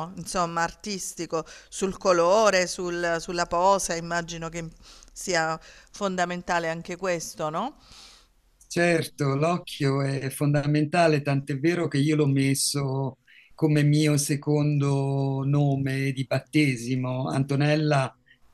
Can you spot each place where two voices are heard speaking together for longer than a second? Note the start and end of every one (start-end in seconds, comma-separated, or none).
none